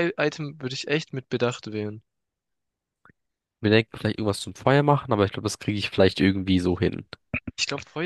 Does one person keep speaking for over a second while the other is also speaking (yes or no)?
no